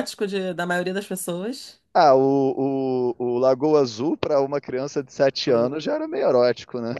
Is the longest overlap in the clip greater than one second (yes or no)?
no